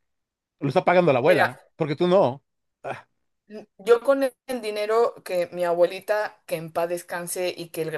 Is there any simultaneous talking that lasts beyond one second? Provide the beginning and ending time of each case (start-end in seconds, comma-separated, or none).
none